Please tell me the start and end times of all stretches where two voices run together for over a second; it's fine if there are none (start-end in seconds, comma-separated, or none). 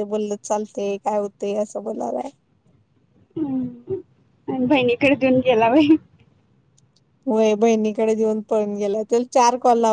none